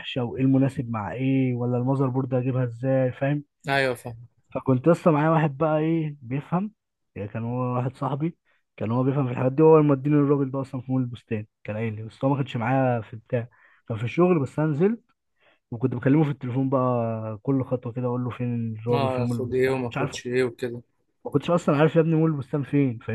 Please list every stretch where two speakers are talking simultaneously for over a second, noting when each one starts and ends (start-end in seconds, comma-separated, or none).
18.9-20.2